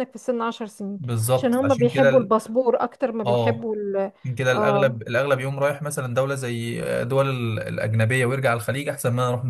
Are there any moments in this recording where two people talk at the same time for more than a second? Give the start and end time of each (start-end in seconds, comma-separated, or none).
1.0-2.3